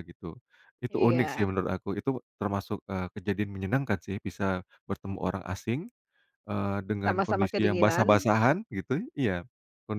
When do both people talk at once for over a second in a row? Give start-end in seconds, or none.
7.0-8.3